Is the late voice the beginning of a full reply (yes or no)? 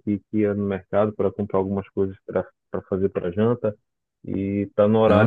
no